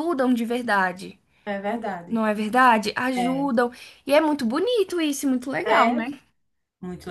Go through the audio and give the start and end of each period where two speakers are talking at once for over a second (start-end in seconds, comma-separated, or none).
none